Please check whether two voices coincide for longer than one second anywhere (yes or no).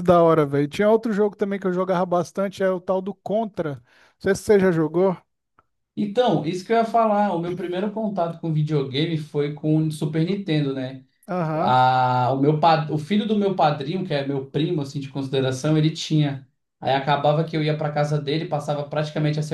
no